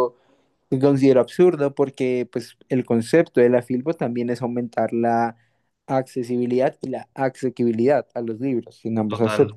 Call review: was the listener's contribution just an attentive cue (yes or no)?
yes